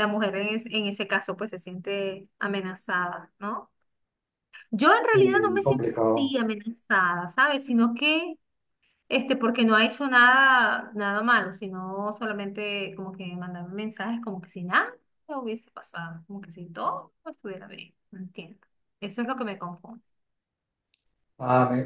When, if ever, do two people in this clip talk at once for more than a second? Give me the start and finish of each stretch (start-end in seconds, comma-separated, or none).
5.1-6.3